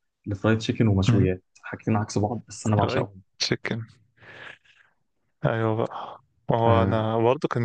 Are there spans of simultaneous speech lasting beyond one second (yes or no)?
no